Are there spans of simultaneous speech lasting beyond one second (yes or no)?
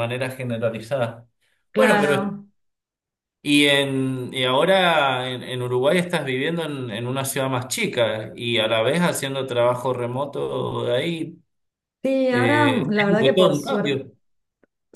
yes